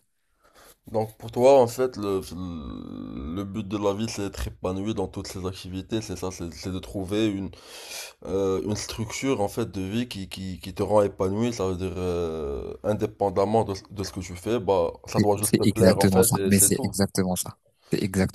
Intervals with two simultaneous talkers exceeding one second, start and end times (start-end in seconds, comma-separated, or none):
15.2-16.9